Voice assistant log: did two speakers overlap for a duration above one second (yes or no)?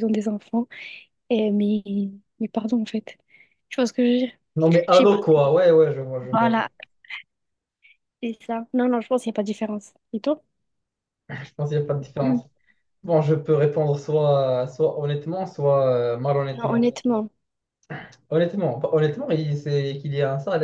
no